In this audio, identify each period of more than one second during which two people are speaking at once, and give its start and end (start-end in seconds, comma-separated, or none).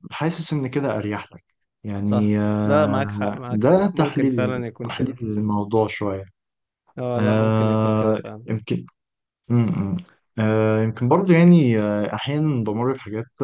2.0-5.2, 7.2-8.5